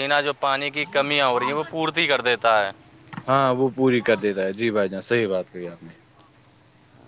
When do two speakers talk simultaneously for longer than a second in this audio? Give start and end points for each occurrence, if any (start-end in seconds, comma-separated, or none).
none